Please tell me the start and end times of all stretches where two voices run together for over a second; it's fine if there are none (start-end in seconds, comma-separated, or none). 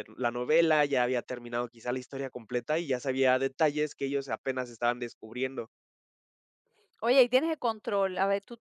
none